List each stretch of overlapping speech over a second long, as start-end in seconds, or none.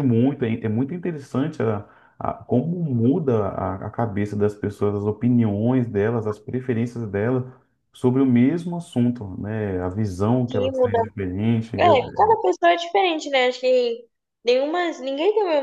none